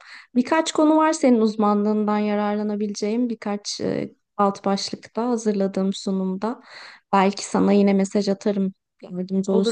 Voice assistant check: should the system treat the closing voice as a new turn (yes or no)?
yes